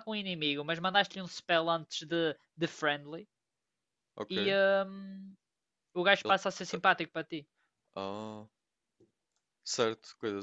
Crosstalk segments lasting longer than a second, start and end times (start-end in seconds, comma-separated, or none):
none